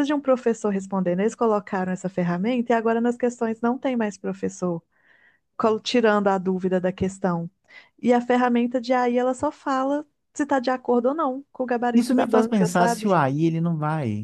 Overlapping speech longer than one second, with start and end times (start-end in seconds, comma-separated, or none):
11.9-13.2